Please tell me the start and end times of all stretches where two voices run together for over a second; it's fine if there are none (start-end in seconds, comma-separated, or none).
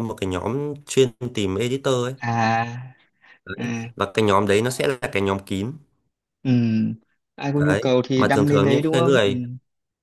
7.5-9.3